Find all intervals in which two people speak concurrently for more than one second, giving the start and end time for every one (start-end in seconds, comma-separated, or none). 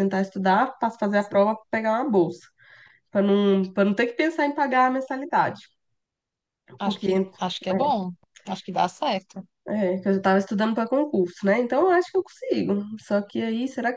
none